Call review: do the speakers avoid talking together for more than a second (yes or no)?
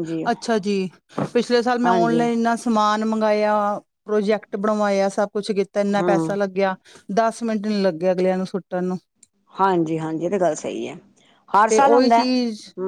yes